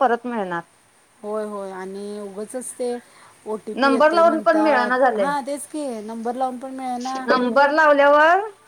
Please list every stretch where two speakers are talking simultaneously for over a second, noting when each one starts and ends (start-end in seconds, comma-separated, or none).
3.8-5.3